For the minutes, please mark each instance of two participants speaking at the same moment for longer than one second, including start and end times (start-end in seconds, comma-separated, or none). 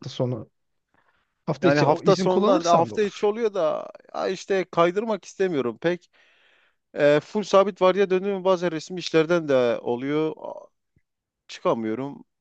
1.6-3.3